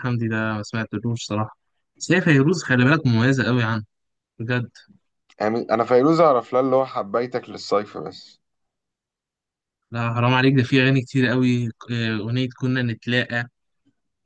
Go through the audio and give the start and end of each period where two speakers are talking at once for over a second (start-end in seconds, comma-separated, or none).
none